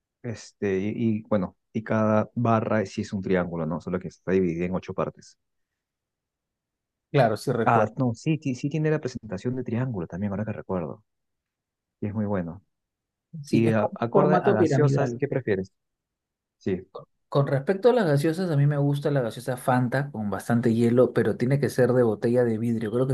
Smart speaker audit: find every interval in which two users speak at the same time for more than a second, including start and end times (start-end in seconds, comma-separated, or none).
13.5-15.2